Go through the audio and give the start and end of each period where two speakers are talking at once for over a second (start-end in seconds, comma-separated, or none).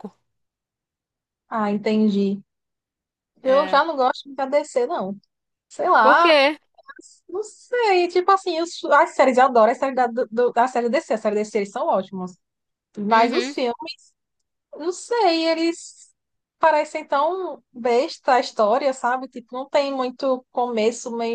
none